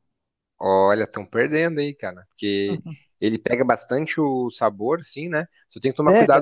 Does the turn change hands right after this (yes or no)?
no